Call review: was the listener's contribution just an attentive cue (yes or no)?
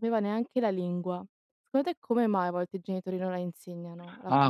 no